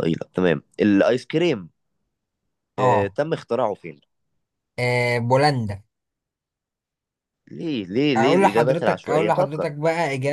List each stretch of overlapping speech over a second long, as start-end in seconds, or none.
8.2-9.7